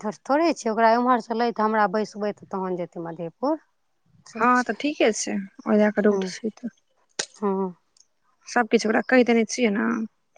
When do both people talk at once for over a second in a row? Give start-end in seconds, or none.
none